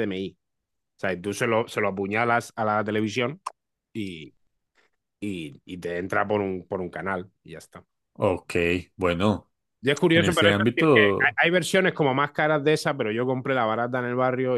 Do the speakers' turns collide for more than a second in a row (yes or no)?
yes